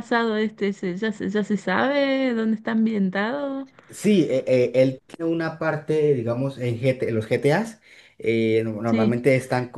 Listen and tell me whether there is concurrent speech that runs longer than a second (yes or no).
no